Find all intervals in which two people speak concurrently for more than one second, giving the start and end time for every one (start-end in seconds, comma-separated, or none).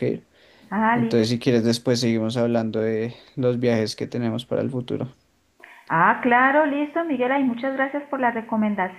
none